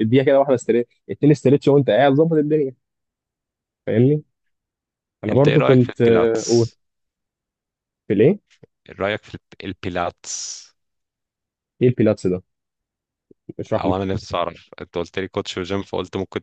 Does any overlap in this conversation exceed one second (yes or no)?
yes